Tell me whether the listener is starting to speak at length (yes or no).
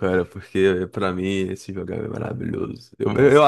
no